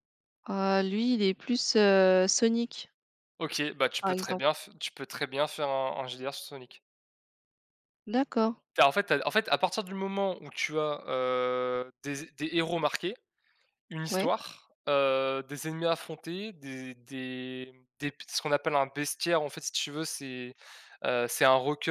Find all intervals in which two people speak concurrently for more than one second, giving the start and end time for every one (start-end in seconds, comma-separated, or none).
none